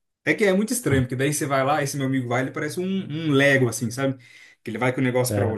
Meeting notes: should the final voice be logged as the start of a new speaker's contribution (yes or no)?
no